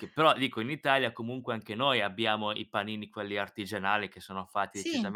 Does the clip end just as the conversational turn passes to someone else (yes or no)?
no